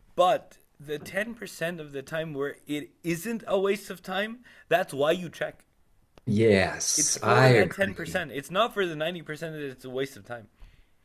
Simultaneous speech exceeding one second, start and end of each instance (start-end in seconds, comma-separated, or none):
7.0-8.2